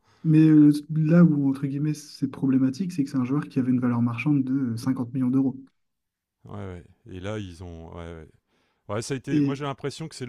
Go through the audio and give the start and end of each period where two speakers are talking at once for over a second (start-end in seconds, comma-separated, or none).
none